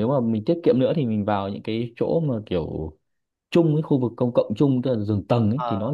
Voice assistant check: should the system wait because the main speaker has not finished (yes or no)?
yes